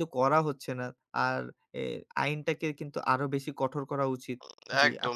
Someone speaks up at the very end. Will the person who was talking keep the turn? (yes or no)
no